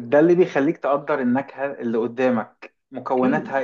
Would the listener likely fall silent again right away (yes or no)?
yes